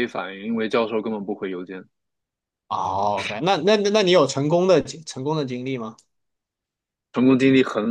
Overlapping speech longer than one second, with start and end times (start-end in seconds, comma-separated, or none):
none